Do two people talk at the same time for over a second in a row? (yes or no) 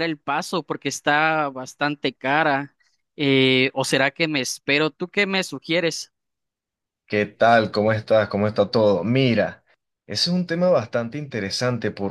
no